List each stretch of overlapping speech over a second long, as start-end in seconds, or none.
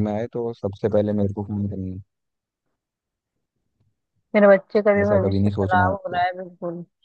5.0-6.2